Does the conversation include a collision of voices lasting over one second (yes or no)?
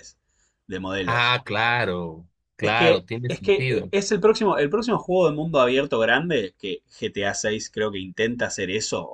yes